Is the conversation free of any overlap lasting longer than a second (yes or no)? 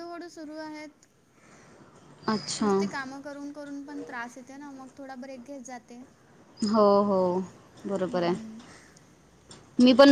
yes